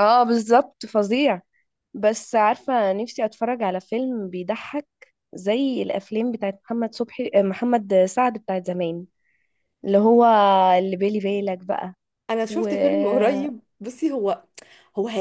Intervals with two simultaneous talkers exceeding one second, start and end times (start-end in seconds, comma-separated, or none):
none